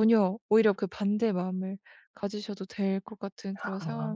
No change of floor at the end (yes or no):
no